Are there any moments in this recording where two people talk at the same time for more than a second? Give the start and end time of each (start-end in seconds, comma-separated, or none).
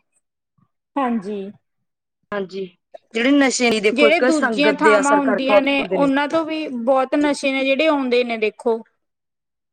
3.9-6.0